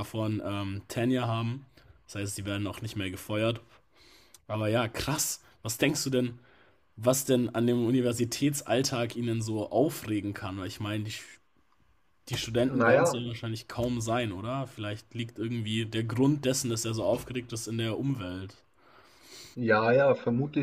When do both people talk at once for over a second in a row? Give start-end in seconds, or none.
none